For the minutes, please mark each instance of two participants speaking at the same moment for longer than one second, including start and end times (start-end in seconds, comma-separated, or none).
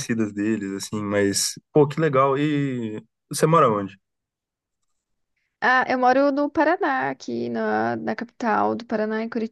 none